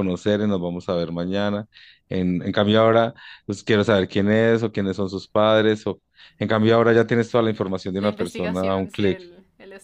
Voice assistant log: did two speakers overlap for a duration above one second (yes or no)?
yes